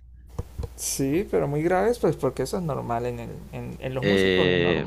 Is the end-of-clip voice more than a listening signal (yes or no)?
yes